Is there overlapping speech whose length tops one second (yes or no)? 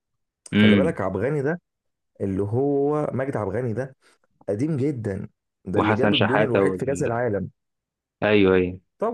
yes